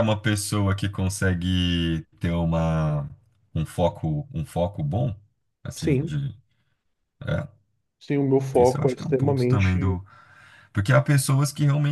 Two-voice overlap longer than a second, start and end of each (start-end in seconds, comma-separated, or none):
8.6-10.0